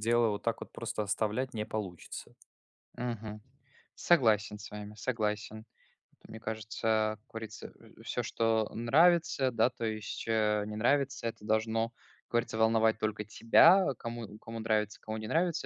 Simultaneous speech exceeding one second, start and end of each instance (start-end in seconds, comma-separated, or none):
none